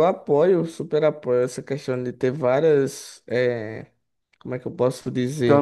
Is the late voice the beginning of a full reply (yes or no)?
yes